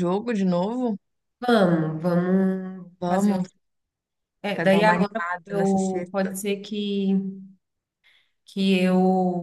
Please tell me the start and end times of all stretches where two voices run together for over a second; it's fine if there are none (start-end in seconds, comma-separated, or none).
4.5-6.3